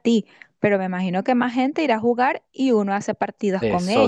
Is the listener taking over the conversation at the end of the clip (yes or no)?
yes